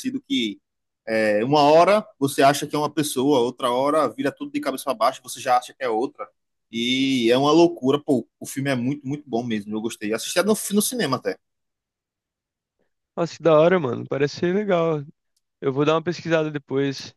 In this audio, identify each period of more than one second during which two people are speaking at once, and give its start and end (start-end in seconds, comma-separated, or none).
none